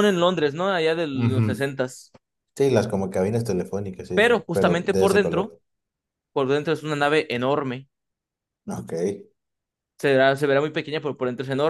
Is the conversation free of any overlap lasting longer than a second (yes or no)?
no